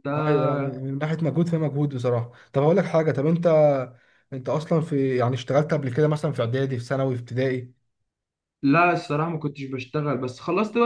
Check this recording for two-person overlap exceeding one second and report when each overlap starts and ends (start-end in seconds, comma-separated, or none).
none